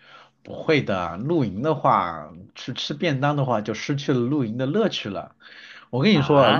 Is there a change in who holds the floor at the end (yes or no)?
yes